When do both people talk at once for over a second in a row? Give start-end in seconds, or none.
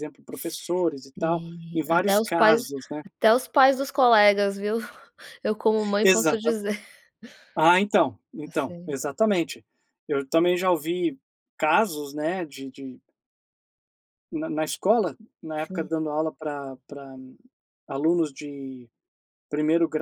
1.2-2.6